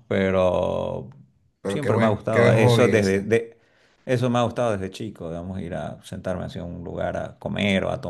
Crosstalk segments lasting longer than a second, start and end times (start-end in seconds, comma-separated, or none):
1.7-3.3